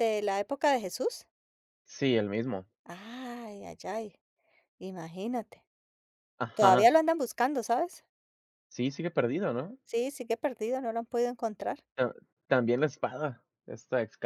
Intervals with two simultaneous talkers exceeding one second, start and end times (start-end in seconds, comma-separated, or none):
none